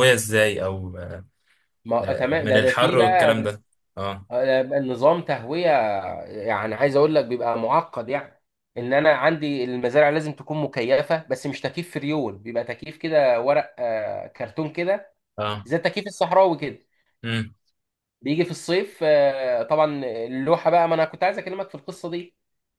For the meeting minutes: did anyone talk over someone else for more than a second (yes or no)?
yes